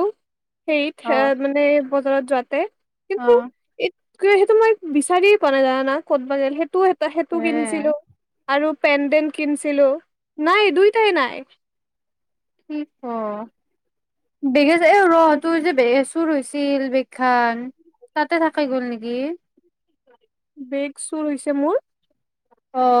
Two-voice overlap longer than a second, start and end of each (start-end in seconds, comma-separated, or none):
none